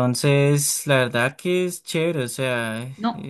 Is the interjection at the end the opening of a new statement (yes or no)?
yes